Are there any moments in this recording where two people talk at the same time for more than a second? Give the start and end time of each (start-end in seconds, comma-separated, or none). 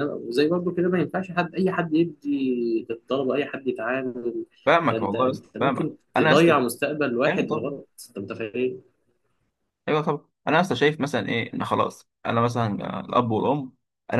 4.9-6.5